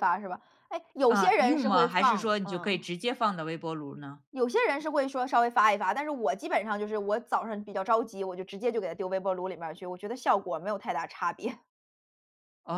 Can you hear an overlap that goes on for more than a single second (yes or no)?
yes